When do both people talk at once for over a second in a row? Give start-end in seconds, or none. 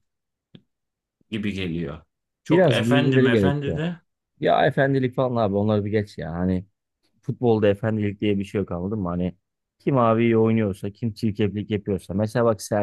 2.5-3.8